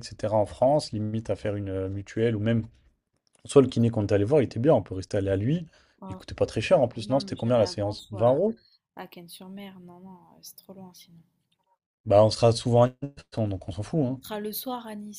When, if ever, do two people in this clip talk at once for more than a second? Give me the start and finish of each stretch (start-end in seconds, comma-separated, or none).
7.0-8.4